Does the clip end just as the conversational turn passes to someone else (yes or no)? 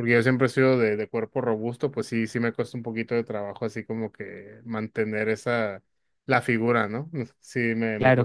yes